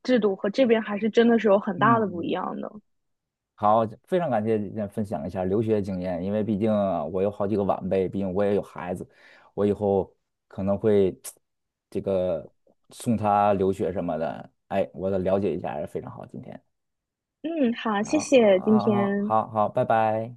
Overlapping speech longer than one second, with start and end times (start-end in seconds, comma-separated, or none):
18.0-19.3